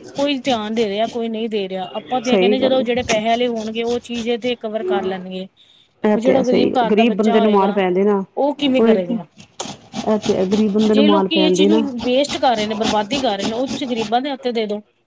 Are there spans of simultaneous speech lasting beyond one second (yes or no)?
yes